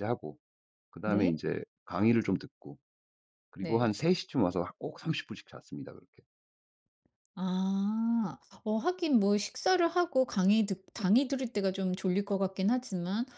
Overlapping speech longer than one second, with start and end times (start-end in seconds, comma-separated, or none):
none